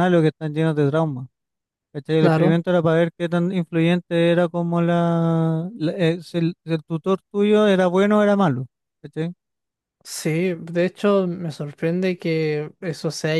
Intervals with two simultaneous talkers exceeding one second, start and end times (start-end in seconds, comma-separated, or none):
none